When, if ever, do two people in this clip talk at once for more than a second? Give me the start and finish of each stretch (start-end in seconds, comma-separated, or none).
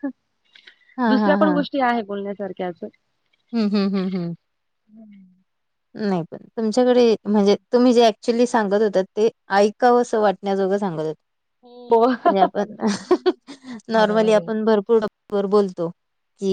none